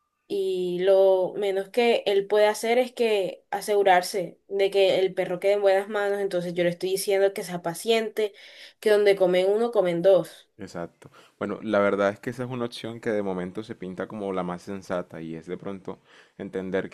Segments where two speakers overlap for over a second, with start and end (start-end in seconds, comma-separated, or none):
none